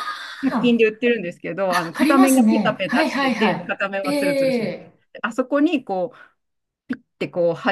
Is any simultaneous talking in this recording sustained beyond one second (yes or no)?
yes